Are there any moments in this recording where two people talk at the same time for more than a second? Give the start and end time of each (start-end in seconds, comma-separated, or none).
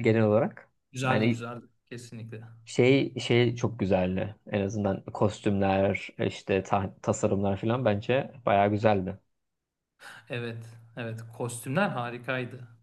none